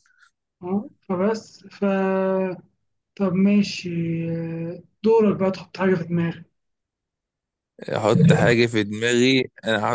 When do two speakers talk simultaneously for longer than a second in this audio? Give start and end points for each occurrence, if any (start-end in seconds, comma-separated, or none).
none